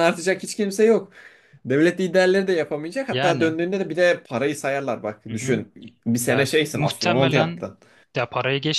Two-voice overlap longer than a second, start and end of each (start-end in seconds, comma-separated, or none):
6.3-7.7